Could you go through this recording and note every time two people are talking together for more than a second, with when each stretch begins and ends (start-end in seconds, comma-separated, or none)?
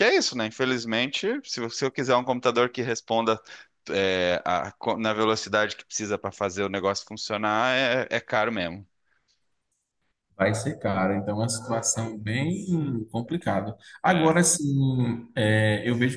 none